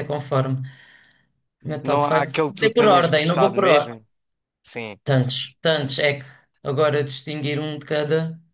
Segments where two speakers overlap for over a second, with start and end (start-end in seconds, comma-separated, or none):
1.8-4.0